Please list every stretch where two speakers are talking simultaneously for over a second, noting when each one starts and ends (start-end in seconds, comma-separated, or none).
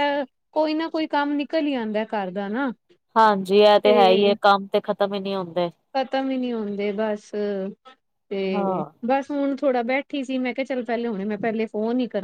none